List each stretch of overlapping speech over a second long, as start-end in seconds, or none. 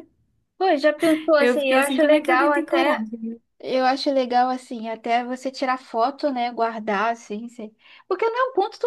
1.4-3.0